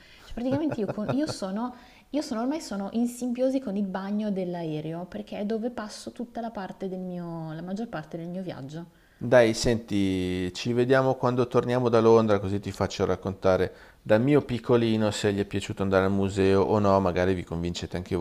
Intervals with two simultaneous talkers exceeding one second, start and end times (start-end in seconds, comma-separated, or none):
none